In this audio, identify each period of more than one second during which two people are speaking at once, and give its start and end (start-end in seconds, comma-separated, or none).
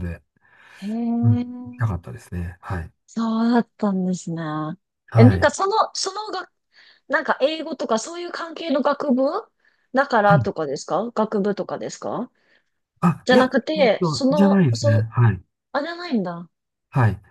13.2-15.1